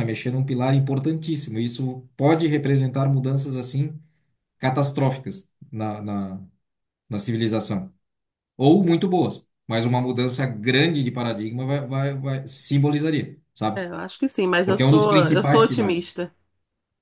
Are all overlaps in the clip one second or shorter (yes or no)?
no